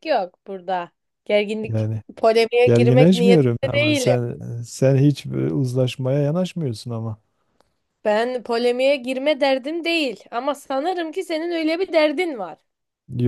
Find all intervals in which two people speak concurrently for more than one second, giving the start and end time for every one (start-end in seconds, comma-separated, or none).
2.6-4.2